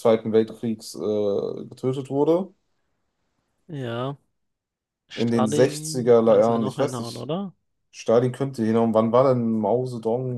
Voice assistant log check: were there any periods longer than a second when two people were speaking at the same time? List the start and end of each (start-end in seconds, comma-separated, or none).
5.2-7.3